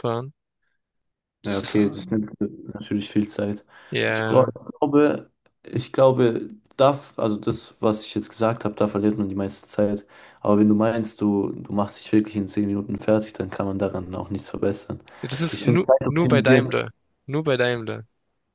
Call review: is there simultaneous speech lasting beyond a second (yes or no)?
yes